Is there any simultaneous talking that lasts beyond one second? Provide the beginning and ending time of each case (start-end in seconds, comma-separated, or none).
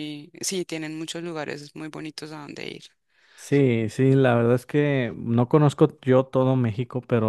none